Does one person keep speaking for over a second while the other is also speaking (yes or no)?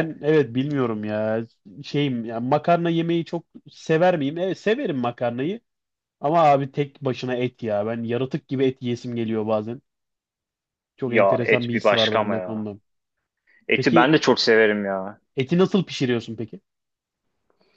yes